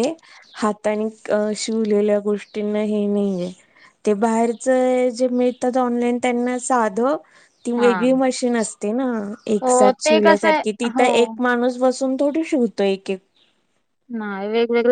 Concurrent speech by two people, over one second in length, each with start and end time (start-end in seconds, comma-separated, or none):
9.6-11.3